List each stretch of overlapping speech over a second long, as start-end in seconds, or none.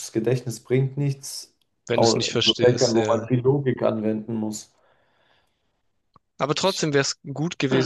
1.9-3.3